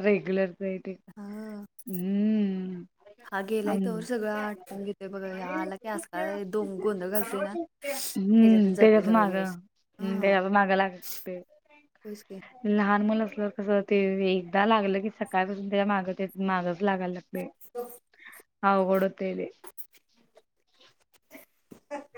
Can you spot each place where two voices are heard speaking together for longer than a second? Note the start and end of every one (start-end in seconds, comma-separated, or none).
7.8-9.6